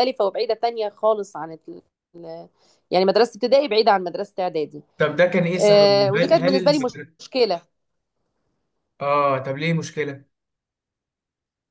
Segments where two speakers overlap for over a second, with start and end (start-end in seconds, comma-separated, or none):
5.6-7.3